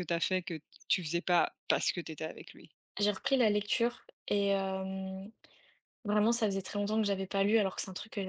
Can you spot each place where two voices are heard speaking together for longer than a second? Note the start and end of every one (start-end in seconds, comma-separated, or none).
none